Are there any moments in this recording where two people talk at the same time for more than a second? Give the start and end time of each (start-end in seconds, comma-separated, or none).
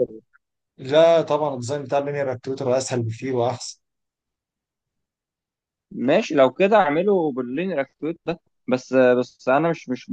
none